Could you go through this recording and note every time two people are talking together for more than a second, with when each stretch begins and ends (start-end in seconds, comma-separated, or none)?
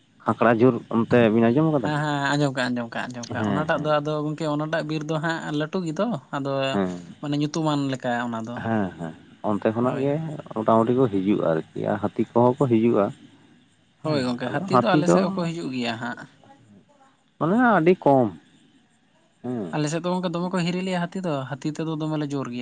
none